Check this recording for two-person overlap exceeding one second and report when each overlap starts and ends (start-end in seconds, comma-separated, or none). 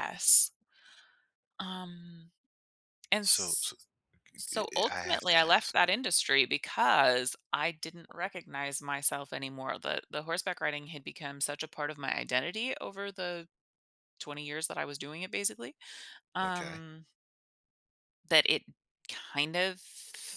4.5-5.7